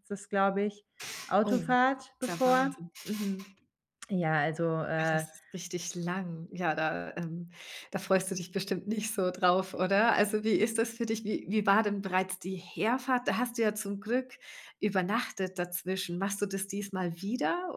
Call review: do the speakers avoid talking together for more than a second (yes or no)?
no